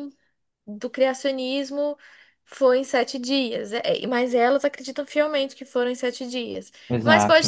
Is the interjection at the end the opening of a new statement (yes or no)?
no